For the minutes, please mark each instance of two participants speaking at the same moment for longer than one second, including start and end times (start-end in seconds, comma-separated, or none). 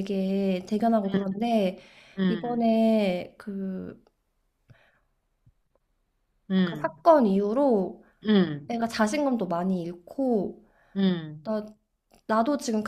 none